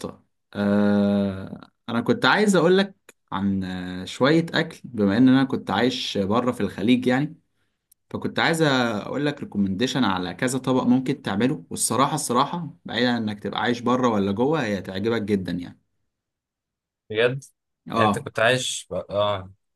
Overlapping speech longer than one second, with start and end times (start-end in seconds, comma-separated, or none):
none